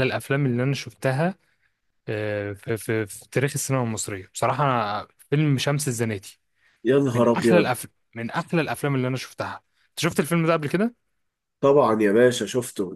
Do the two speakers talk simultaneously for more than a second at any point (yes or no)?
no